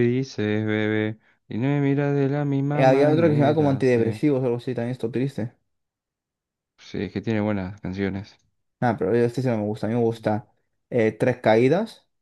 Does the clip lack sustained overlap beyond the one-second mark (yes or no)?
no